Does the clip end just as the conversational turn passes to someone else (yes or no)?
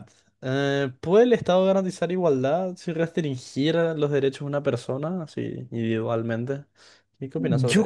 yes